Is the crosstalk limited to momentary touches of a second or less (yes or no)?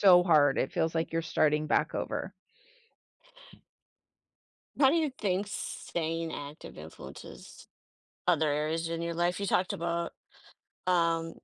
yes